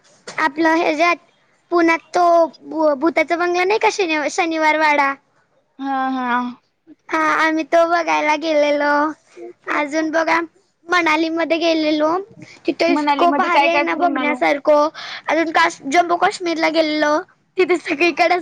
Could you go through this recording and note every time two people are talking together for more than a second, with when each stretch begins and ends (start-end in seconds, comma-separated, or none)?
12.9-14.4